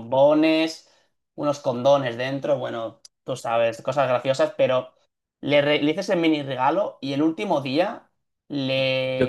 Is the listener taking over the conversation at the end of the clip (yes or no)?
yes